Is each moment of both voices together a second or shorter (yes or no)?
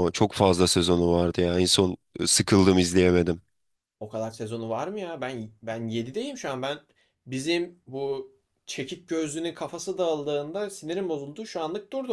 yes